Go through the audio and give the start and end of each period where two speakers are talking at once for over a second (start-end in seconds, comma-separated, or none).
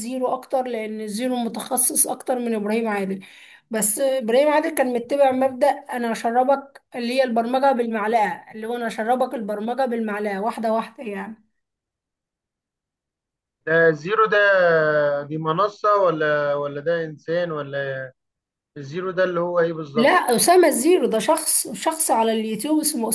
none